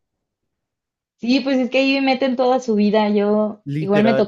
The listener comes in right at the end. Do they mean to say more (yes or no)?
no